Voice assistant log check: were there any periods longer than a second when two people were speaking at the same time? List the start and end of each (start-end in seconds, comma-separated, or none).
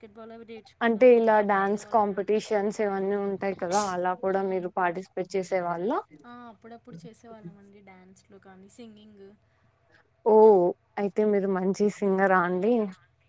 0.9-2.4